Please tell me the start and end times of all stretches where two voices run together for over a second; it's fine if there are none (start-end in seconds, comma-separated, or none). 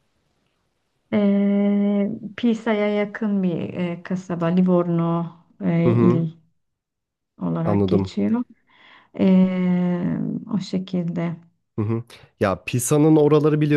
none